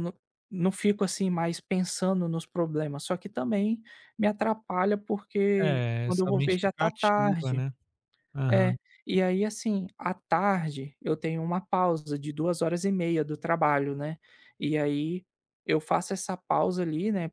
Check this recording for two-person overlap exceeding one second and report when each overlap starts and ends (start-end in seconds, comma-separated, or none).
5.6-7.6